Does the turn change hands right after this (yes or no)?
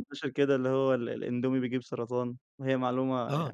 yes